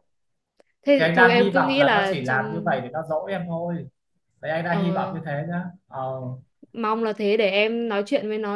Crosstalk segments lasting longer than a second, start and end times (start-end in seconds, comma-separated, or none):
1.0-2.8